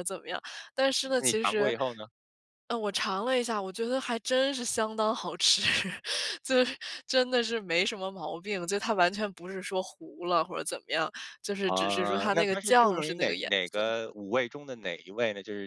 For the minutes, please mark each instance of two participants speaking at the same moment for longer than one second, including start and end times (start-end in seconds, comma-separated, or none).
11.7-13.8